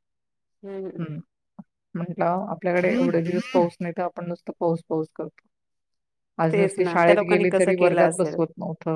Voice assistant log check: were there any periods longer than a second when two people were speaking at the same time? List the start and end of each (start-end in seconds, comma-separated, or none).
6.5-8.4